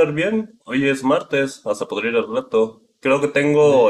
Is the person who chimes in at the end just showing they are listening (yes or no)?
yes